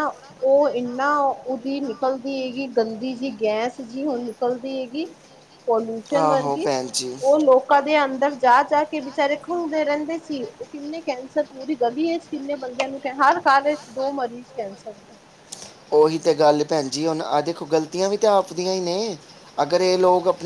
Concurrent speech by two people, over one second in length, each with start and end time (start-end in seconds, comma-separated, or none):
none